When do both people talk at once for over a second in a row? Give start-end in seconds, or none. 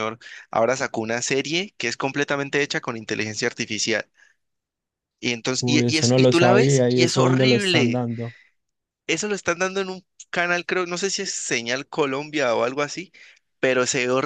5.6-8.0